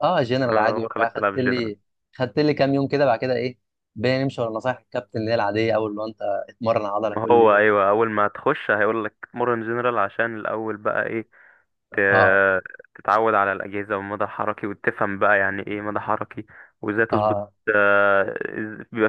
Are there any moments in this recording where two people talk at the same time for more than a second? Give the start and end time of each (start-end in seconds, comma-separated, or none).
0.5-1.7